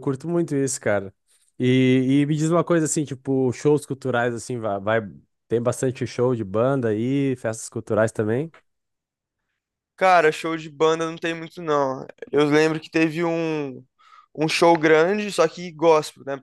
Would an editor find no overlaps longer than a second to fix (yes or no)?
yes